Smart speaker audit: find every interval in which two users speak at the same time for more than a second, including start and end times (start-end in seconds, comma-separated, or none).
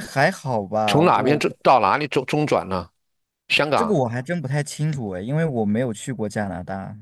none